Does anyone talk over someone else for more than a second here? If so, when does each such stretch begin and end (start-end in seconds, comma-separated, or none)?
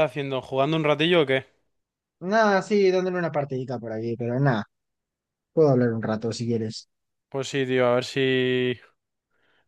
none